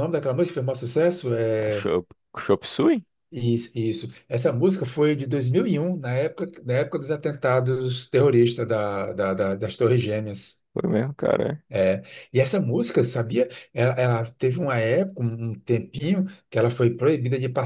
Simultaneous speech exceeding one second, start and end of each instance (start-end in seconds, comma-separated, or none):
none